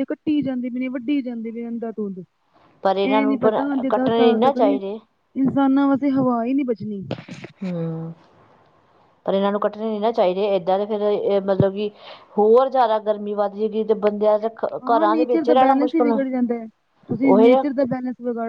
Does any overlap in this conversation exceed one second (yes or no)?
yes